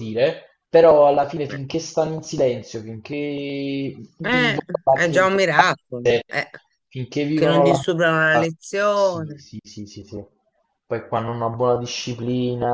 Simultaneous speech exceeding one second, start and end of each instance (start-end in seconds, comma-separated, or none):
4.2-6.2